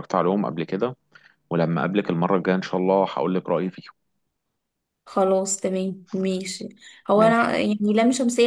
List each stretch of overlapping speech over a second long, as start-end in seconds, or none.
none